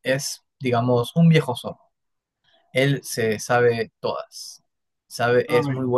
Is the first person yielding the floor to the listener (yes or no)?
no